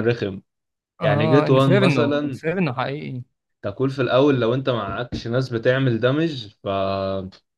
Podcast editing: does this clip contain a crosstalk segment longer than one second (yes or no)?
yes